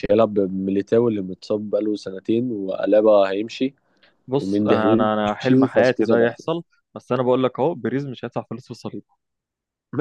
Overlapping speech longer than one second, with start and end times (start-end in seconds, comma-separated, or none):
4.4-6.6